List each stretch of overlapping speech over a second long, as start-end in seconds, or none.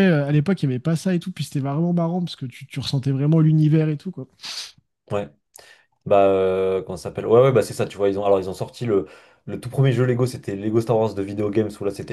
none